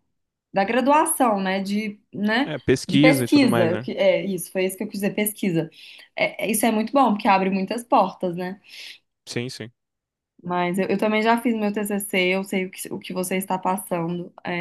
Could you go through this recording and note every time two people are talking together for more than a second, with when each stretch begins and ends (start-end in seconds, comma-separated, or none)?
2.5-3.9